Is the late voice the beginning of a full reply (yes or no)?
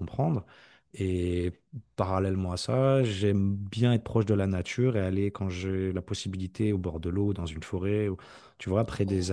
no